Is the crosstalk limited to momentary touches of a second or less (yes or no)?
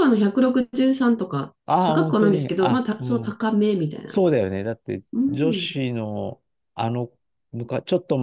no